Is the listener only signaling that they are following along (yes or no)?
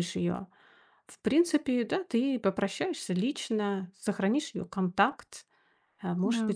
yes